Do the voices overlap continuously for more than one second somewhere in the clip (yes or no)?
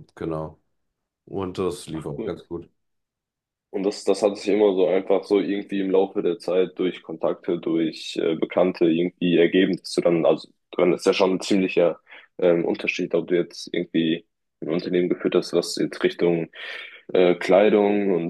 no